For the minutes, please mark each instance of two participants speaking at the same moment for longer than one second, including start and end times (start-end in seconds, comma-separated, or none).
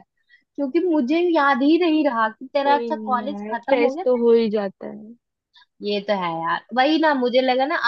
2.6-4.2